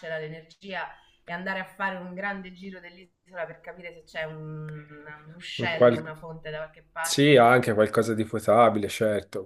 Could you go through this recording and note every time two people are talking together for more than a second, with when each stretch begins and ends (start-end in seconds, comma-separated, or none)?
none